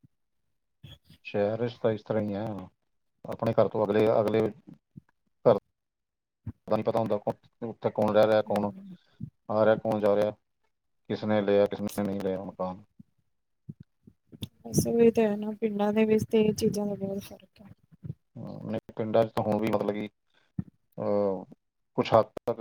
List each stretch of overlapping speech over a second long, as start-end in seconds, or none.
none